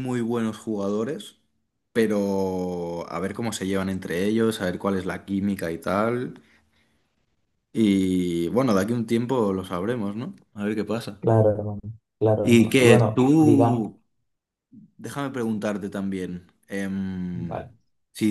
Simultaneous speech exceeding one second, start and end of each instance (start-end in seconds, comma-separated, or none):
12.4-13.9